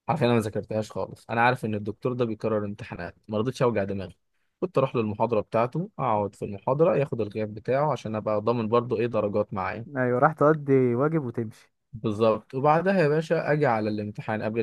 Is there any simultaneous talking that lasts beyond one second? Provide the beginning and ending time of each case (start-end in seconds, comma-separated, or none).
none